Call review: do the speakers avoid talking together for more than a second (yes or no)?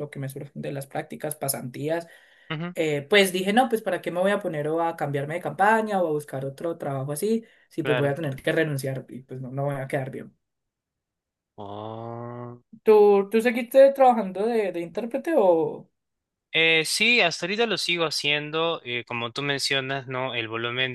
yes